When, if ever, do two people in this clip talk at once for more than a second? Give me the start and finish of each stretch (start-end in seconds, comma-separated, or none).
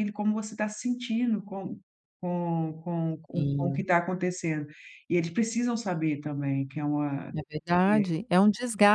none